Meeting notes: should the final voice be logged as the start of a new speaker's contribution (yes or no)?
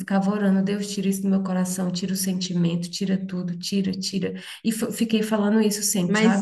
yes